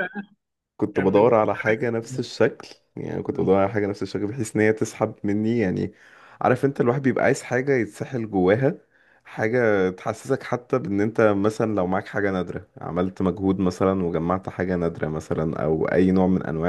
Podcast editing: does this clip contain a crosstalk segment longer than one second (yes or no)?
yes